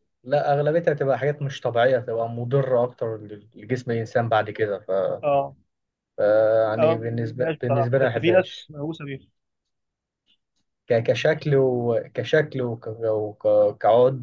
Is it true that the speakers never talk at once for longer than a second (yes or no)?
no